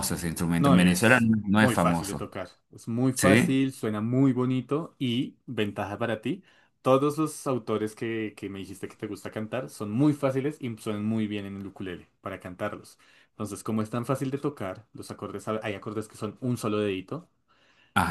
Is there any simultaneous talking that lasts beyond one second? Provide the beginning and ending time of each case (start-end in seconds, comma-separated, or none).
0.6-2.2